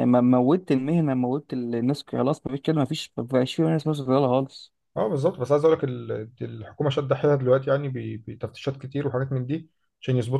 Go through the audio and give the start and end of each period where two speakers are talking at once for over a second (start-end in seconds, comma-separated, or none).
none